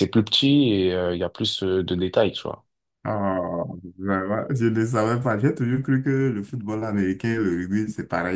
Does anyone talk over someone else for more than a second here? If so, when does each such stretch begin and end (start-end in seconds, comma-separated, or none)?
none